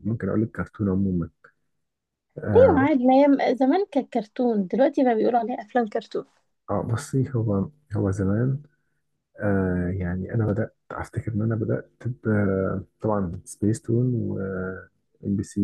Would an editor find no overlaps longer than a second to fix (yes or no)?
yes